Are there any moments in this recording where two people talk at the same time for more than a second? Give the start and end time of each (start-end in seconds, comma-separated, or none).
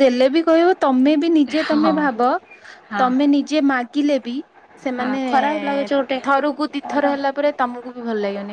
none